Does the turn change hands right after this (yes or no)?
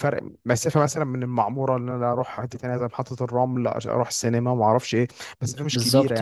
yes